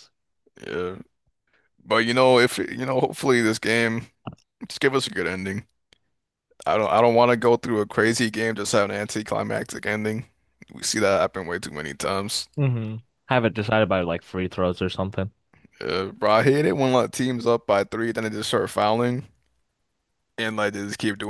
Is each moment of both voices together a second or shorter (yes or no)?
yes